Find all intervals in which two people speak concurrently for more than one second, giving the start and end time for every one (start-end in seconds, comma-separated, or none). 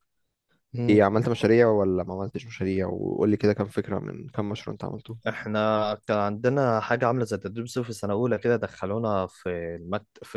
none